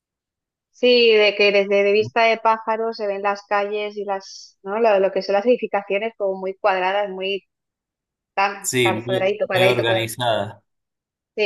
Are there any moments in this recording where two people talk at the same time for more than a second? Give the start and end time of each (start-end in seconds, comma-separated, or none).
8.6-10.2